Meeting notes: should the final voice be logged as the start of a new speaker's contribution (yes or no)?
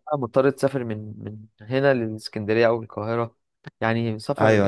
yes